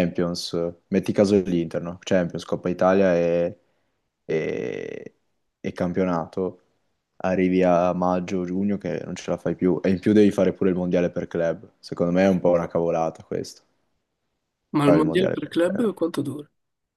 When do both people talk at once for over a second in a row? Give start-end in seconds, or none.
14.8-16.2